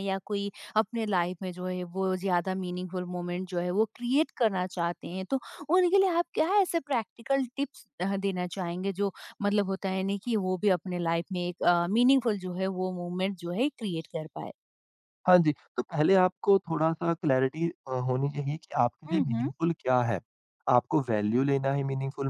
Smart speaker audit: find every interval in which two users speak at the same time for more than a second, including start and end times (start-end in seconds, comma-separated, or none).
none